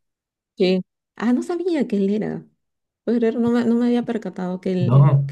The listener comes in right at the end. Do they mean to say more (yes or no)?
yes